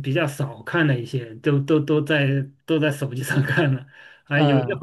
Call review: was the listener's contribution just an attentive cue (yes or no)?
yes